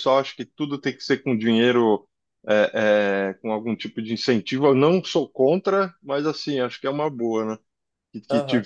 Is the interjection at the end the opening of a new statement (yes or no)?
yes